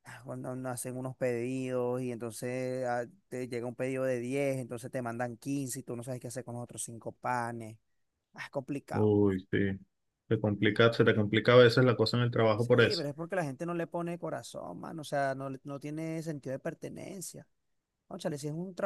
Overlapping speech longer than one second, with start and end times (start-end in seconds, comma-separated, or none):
none